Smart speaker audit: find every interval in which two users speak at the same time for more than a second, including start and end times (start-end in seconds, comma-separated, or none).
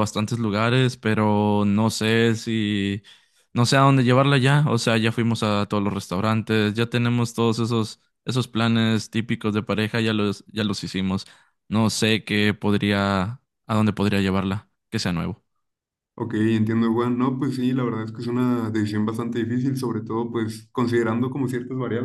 none